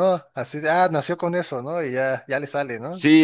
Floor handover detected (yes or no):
yes